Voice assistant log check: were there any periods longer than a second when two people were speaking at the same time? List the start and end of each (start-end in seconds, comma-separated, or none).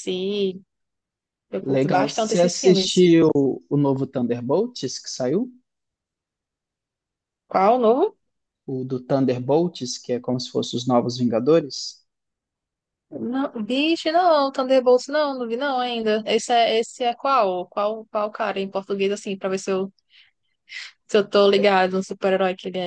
1.6-3.1